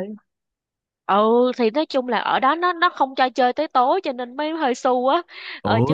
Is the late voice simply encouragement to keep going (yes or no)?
yes